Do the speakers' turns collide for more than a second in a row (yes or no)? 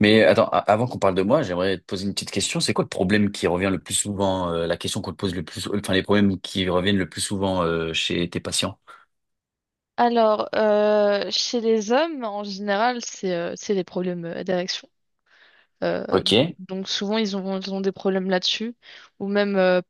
no